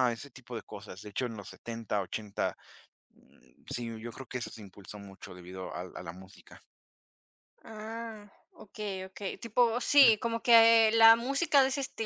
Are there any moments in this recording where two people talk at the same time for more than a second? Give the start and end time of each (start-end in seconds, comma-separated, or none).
none